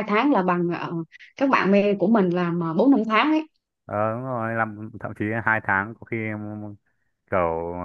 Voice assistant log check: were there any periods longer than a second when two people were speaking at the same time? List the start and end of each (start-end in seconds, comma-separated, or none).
none